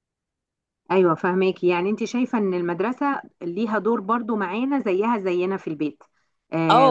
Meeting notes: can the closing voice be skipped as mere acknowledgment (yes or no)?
no